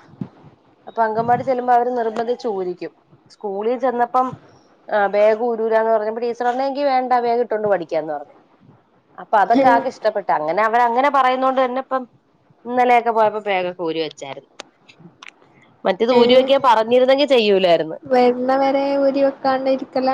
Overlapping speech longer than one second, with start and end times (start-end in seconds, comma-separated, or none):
none